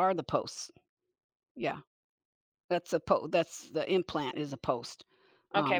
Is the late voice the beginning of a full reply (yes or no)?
yes